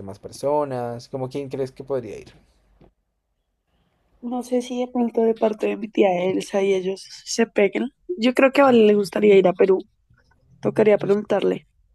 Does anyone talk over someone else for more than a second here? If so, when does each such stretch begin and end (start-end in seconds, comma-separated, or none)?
none